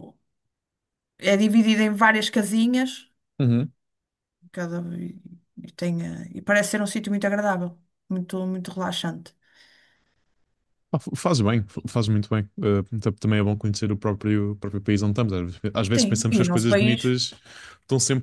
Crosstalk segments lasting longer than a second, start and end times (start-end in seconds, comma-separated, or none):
15.9-17.1